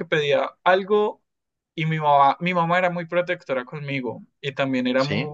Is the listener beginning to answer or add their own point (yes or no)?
no